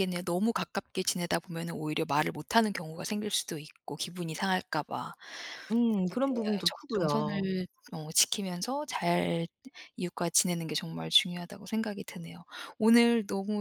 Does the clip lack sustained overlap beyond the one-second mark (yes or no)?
no